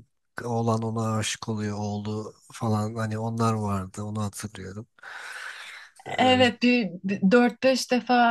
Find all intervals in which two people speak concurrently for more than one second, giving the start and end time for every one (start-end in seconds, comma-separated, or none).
none